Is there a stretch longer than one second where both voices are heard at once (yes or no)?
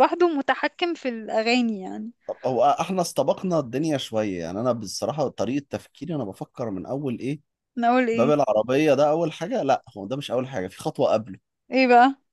no